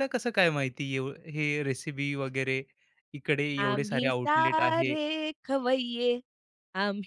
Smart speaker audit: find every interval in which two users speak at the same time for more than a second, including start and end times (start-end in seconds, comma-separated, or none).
3.6-4.9